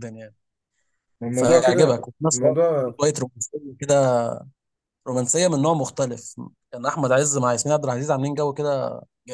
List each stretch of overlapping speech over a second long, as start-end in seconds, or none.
1.3-3.0